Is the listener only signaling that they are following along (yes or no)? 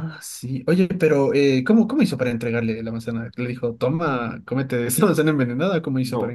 no